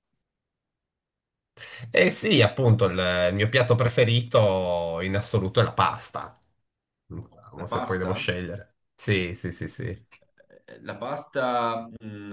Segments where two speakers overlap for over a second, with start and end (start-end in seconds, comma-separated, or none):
none